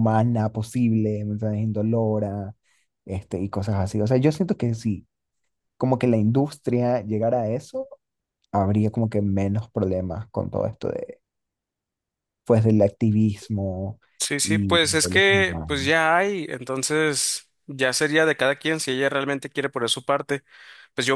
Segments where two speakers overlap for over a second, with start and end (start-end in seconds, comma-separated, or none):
14.4-15.8